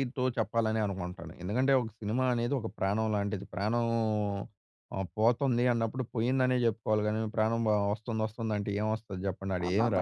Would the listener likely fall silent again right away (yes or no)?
no